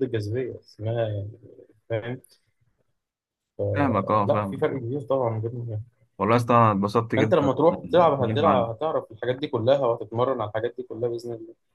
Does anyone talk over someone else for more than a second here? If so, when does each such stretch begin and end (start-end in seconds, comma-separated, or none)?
7.2-8.7